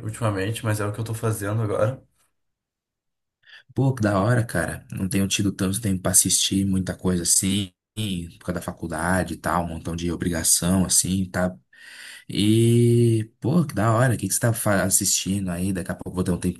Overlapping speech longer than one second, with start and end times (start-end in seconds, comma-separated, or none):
none